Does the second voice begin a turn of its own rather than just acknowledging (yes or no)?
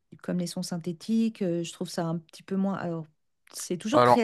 no